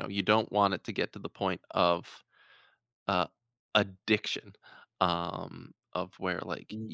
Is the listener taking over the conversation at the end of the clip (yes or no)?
no